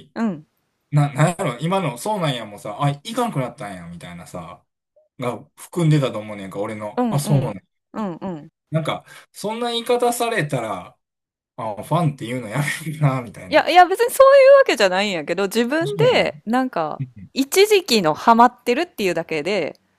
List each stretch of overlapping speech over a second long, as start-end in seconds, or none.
none